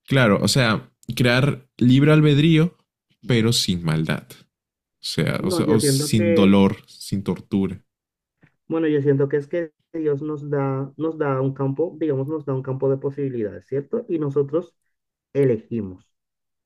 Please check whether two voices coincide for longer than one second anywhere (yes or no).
yes